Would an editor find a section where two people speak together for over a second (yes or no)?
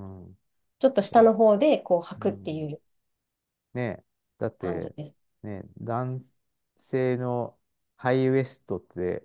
no